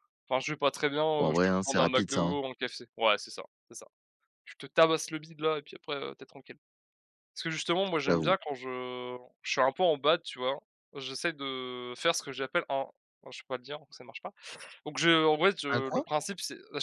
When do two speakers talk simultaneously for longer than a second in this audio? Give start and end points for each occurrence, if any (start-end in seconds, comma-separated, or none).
1.2-2.4